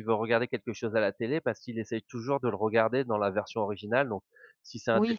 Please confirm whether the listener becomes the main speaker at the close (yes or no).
no